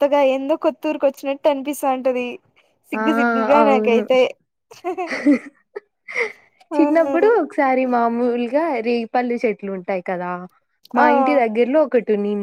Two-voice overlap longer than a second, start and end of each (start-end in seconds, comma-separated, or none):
none